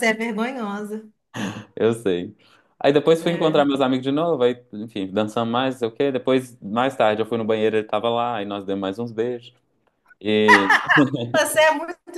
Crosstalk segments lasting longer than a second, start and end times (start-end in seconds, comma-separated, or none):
none